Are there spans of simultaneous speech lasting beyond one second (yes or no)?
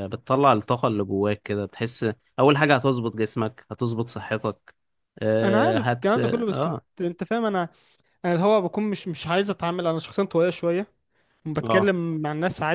yes